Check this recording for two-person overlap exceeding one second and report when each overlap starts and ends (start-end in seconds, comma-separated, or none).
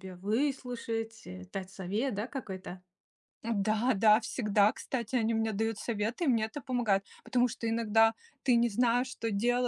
none